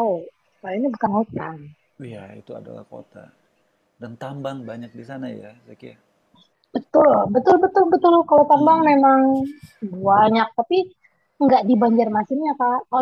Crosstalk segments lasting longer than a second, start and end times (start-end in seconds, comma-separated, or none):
none